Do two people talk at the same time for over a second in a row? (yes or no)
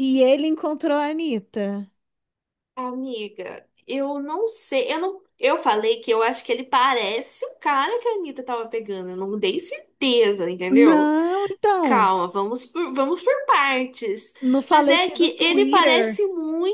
yes